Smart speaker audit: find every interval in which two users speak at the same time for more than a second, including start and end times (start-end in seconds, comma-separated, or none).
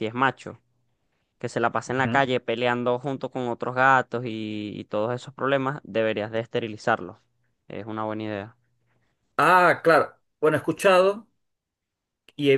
none